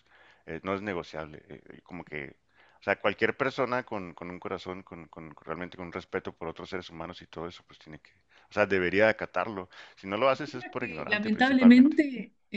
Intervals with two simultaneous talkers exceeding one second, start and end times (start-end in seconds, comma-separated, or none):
10.3-12.0